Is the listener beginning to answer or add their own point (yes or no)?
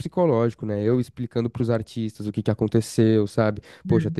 no